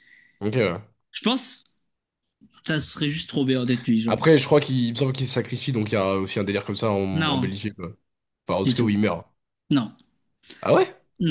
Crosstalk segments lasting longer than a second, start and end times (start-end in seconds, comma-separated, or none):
none